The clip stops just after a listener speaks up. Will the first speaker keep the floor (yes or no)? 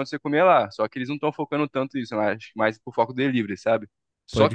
yes